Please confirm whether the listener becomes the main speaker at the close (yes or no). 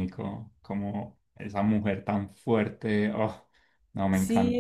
yes